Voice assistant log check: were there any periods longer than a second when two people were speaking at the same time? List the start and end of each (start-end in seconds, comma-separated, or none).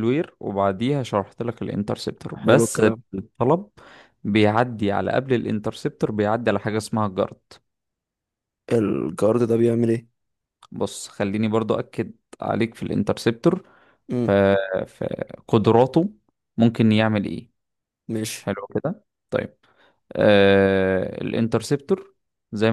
none